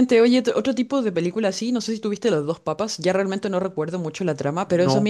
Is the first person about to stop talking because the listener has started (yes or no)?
no